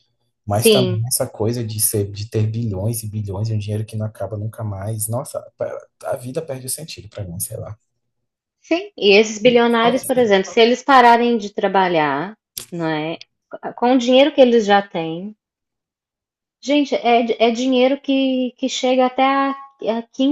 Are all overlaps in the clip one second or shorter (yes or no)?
yes